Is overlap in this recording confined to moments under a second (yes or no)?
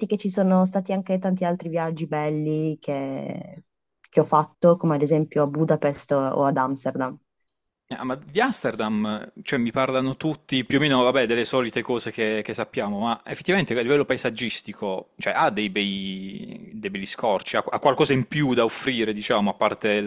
yes